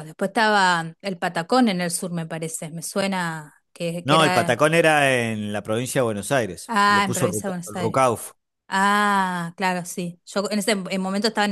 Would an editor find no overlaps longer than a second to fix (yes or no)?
no